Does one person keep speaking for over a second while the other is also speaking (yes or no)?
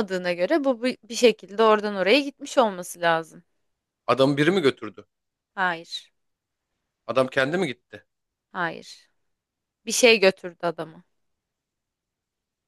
no